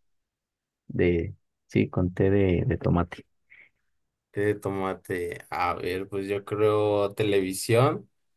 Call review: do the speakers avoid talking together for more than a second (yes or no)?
yes